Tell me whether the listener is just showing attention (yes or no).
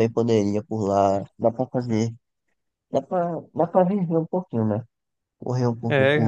no